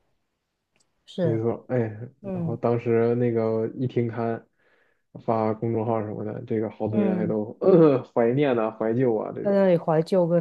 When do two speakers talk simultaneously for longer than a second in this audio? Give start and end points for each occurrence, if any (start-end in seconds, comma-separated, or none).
none